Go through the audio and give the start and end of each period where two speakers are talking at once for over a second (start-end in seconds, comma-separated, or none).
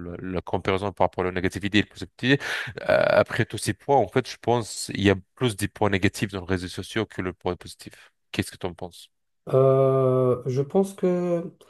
none